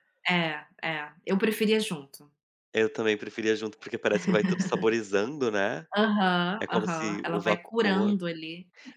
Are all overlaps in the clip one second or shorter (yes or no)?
no